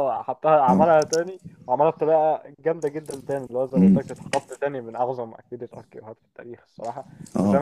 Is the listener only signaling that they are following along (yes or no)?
yes